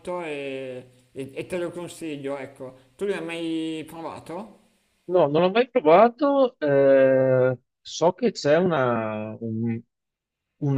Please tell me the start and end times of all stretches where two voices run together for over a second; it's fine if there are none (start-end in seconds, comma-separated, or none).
none